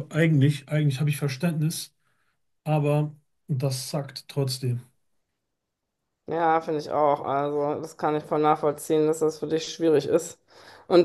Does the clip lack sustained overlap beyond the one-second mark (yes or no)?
yes